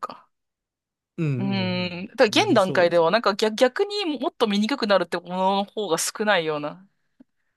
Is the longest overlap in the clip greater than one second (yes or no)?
yes